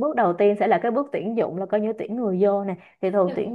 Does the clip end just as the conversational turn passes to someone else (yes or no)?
no